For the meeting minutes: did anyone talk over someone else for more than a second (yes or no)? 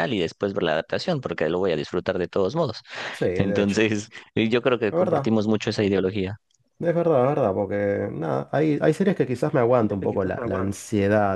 no